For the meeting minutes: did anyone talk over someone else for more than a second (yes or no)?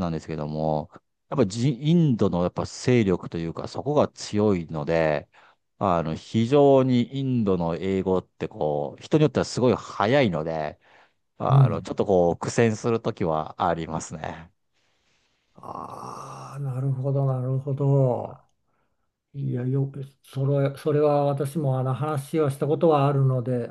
no